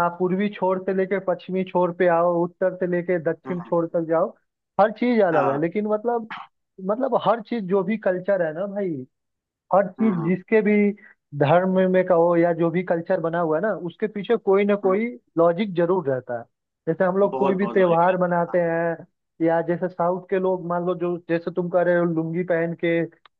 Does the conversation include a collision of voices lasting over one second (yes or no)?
yes